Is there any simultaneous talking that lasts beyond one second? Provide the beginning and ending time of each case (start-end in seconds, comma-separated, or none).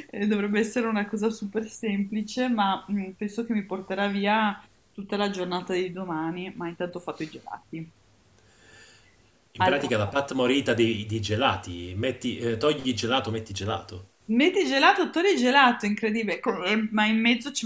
none